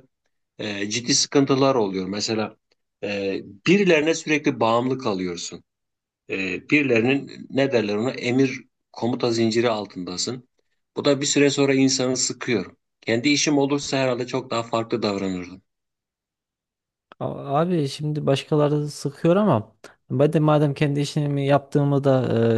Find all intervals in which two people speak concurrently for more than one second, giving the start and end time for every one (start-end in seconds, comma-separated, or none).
none